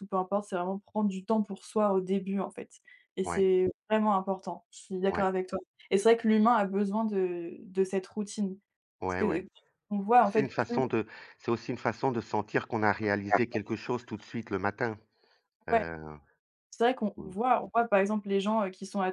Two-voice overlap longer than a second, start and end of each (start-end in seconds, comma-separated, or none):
none